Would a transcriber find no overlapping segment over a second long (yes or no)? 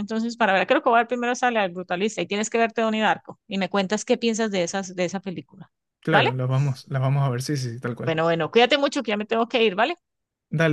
yes